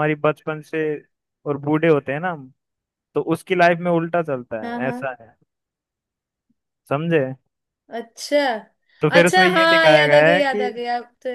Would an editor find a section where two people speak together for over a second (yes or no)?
yes